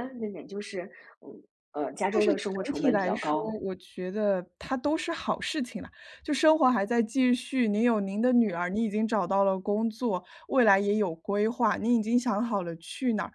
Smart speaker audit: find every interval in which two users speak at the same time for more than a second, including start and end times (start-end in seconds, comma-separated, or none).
2.1-3.5